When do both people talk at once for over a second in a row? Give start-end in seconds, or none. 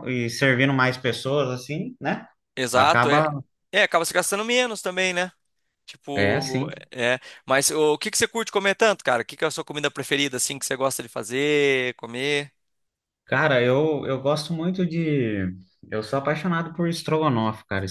none